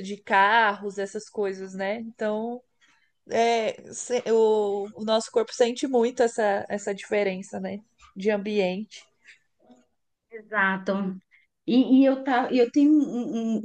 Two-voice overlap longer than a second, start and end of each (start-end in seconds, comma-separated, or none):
none